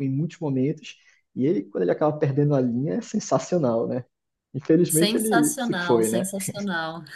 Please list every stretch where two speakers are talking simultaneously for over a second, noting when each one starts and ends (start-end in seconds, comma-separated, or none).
4.9-6.2